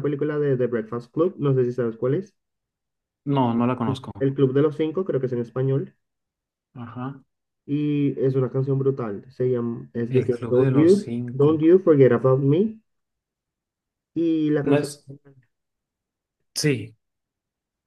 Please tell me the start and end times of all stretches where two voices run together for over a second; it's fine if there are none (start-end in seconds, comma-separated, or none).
10.1-11.6